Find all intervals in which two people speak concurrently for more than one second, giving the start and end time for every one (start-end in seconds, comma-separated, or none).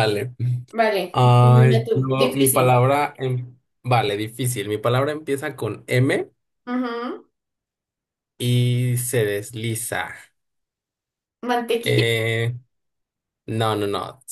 1.1-2.8